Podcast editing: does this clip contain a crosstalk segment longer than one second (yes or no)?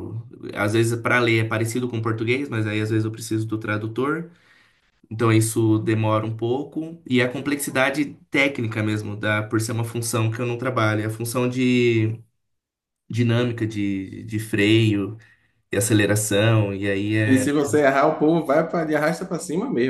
no